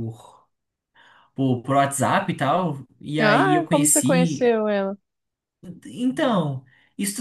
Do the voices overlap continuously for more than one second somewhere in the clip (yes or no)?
yes